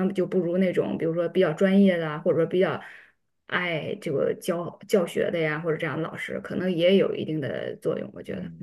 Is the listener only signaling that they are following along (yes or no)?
no